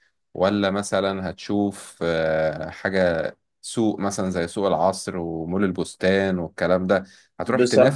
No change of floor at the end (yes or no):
yes